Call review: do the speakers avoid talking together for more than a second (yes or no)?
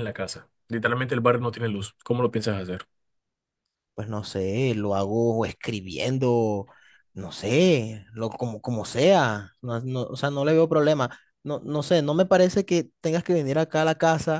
yes